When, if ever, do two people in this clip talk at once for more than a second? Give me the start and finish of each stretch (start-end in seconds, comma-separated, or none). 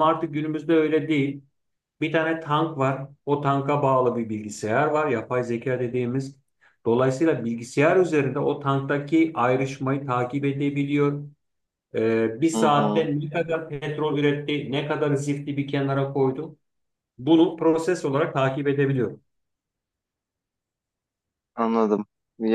none